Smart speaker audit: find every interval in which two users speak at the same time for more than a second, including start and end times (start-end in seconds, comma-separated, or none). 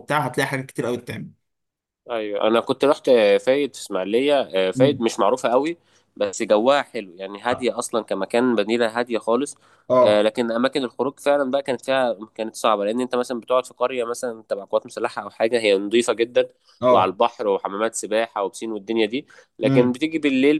none